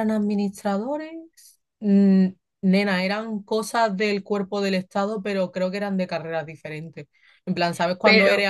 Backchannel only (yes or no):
yes